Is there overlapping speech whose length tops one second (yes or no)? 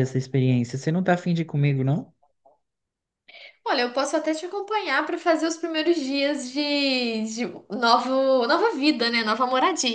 no